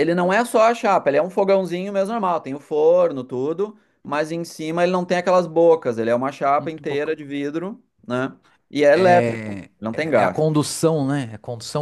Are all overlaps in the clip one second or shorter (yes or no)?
no